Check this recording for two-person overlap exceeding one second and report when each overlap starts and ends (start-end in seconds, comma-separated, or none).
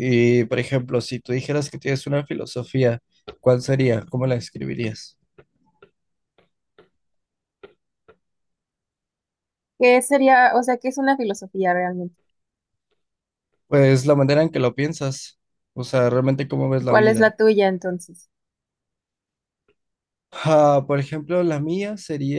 none